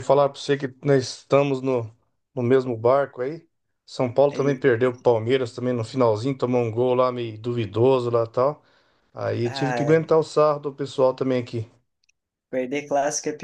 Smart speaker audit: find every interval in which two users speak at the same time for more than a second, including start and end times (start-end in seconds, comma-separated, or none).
none